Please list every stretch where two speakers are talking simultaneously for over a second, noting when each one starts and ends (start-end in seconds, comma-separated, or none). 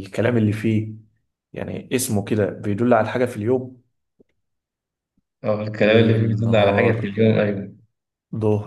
5.8-7.1